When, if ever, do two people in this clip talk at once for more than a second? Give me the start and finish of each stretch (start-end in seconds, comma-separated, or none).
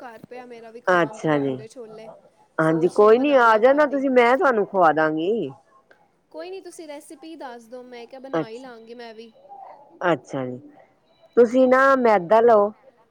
2.7-4.0